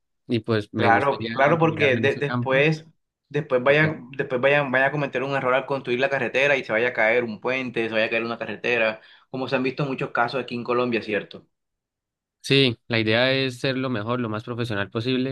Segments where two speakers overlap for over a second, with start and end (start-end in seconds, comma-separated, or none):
0.8-2.7